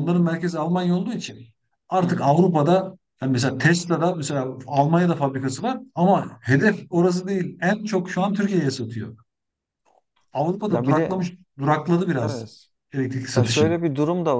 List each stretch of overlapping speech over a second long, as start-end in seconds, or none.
none